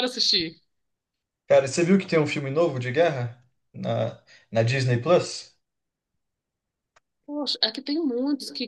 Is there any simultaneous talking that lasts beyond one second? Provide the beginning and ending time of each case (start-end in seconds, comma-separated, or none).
none